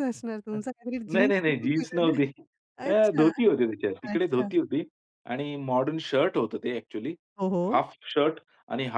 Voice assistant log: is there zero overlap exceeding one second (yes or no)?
no